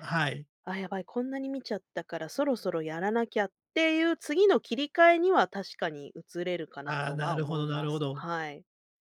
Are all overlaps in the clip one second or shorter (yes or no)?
no